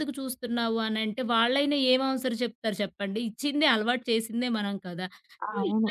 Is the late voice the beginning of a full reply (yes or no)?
no